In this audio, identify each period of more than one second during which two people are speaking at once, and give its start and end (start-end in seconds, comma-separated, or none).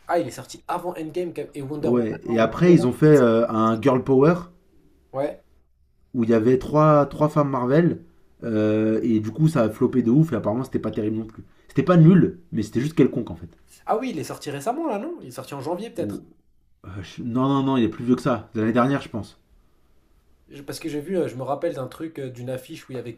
1.8-3.2